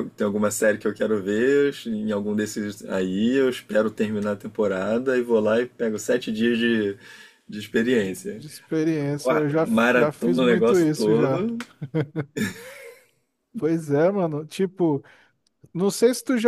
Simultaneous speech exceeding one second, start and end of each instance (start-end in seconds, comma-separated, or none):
9.2-11.4